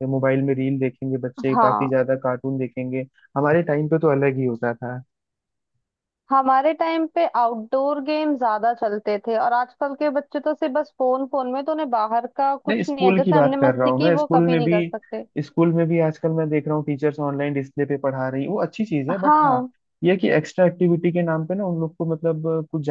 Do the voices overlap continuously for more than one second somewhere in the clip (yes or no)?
yes